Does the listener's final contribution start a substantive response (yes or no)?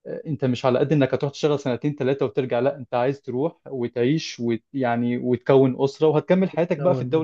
no